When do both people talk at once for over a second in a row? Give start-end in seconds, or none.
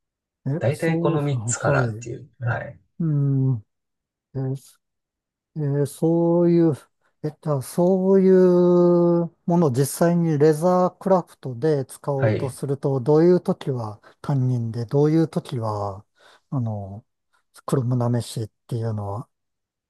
0.6-2.1